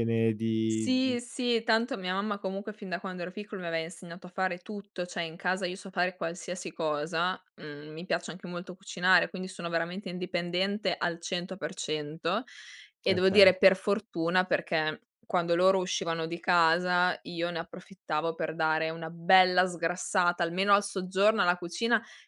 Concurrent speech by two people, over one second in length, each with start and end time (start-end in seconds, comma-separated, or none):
none